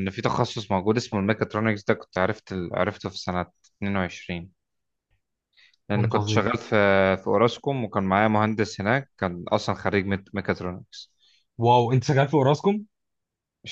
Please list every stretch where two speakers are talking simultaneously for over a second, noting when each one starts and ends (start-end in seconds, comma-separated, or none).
none